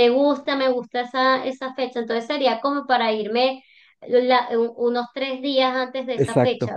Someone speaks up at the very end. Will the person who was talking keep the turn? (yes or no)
no